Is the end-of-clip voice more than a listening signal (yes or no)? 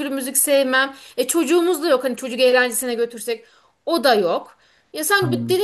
no